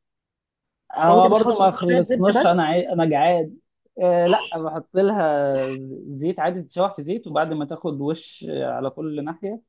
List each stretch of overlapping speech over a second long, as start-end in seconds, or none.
1.1-2.7